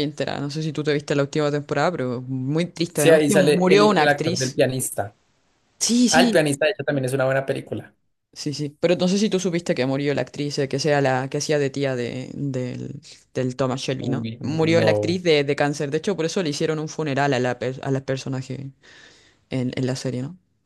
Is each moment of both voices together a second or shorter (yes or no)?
no